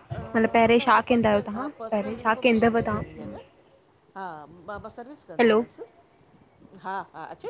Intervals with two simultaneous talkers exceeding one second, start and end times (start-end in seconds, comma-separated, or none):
1.9-3.4